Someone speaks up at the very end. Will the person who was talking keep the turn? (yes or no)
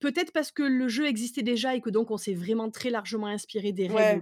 no